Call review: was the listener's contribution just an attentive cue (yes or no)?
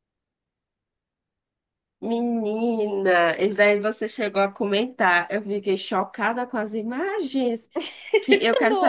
yes